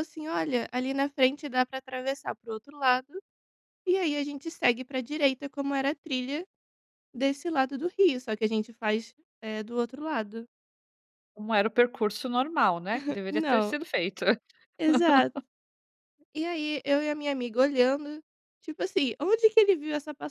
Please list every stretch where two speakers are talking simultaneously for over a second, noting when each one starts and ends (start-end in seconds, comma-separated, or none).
none